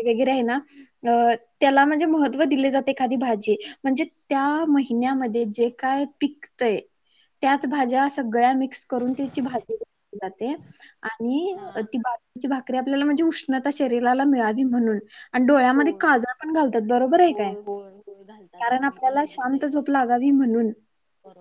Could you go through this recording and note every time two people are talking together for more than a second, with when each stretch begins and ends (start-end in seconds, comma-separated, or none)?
18.6-19.9